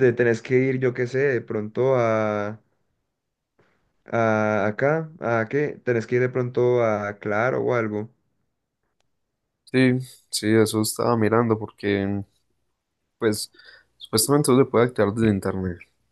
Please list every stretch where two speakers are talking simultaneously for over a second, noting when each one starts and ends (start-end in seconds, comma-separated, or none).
none